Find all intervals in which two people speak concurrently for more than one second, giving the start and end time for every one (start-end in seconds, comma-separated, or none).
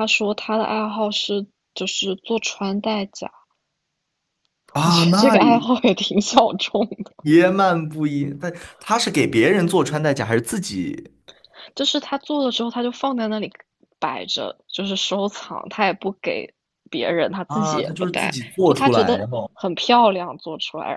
17.5-19.5